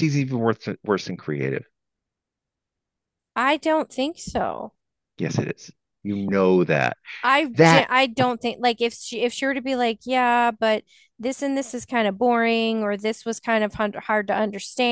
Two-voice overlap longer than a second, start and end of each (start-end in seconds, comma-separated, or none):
none